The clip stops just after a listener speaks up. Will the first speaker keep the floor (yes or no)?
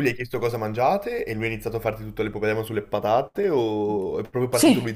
no